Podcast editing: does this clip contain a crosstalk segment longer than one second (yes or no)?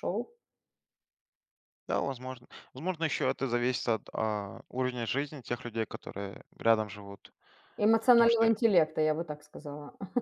no